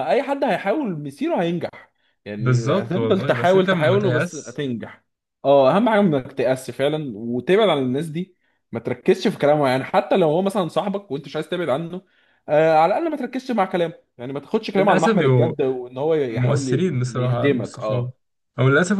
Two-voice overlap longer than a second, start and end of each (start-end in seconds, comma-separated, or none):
2.4-4.6, 16.3-18.1